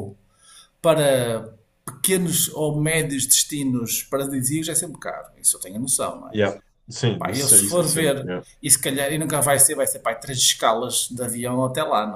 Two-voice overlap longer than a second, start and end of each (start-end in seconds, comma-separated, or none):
7.2-8.4